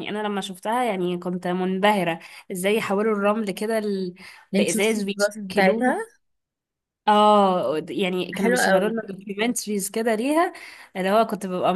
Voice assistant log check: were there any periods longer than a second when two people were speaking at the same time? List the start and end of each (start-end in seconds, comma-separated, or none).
4.5-6.0